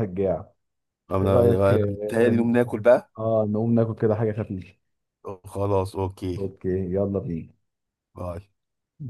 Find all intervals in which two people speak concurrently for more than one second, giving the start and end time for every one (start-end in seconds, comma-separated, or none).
1.2-2.5